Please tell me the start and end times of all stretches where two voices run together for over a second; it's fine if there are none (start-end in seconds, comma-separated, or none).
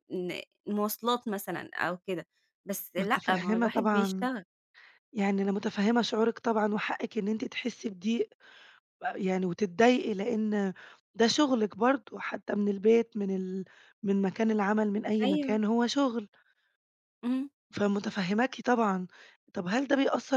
3.0-4.3